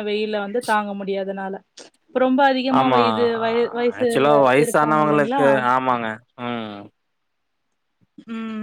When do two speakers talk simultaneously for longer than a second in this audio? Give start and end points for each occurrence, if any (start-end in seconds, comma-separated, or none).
4.0-5.4